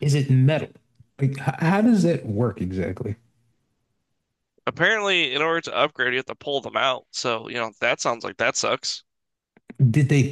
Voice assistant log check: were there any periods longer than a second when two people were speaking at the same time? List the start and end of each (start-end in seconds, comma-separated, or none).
none